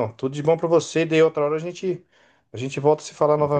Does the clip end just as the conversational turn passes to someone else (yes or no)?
yes